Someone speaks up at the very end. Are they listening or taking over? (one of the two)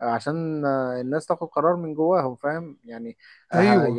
listening